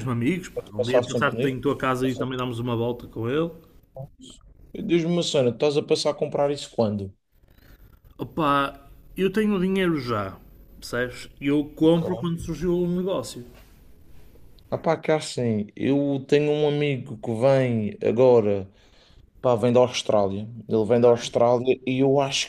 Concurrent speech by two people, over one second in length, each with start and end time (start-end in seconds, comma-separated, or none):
0.5-2.4